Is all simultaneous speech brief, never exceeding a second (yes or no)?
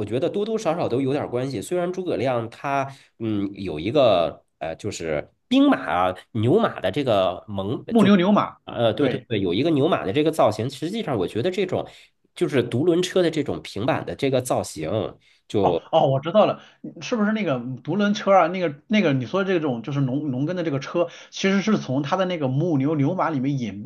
yes